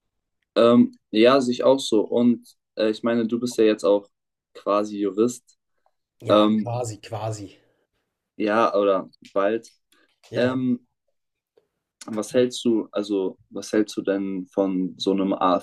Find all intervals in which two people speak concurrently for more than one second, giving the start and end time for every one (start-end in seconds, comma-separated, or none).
none